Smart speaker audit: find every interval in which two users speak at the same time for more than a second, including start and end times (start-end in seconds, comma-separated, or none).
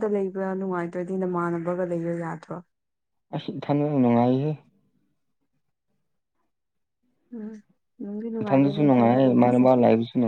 8.4-9.7